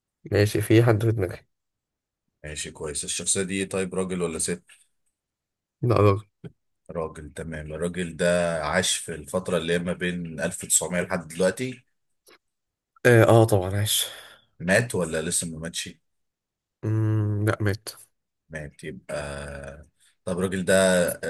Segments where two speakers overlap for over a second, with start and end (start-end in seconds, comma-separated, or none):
none